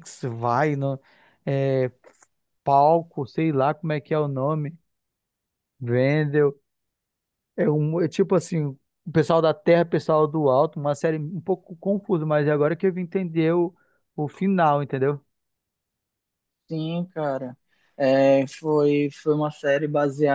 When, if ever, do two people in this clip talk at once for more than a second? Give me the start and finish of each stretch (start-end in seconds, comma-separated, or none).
none